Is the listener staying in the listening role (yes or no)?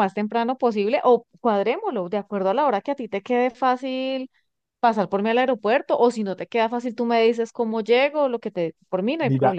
no